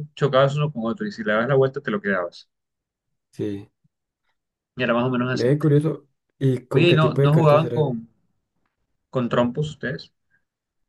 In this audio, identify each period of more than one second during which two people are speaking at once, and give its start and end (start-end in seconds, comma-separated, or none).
6.7-8.0